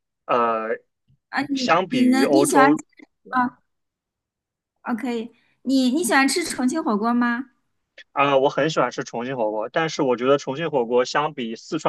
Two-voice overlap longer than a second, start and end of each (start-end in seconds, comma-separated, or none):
1.5-2.8